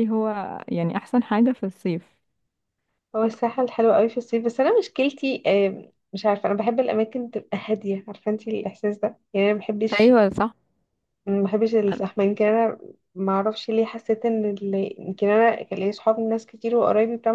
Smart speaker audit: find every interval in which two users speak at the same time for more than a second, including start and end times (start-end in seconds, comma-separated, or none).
none